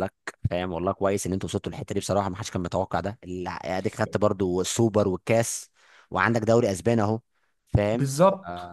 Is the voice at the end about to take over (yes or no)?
yes